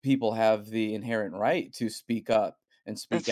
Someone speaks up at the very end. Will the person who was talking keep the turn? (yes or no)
yes